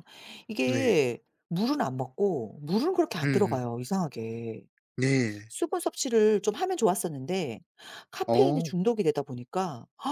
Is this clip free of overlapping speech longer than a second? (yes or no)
yes